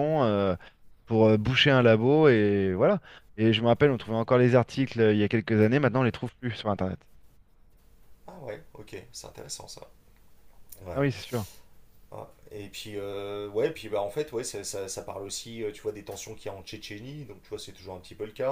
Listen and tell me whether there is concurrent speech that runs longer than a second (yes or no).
no